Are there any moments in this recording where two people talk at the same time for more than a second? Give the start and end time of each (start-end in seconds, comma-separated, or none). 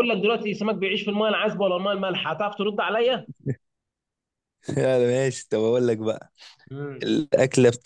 none